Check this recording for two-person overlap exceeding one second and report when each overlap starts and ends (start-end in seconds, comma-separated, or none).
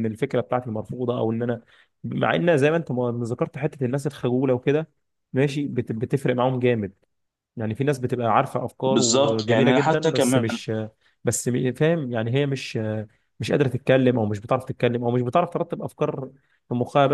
8.8-10.6